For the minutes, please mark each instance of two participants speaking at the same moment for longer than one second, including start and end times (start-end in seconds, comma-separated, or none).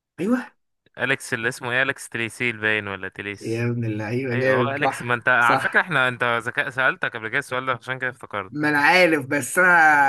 4.3-5.9